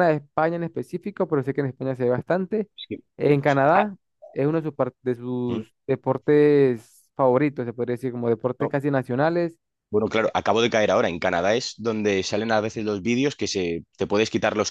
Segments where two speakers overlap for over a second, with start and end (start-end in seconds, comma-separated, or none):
none